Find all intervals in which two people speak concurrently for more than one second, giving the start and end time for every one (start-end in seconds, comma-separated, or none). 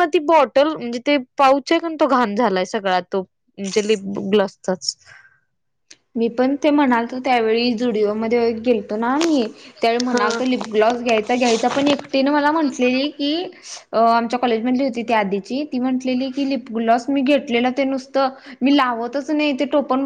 none